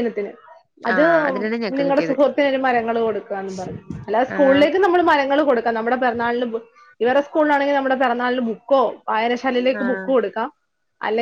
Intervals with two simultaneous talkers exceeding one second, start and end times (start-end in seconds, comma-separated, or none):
none